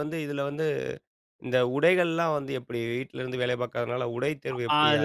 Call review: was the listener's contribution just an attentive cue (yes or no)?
no